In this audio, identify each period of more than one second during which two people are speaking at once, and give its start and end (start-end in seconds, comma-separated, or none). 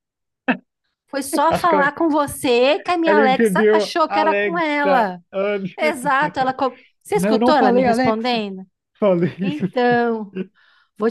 3.0-5.2, 7.1-8.5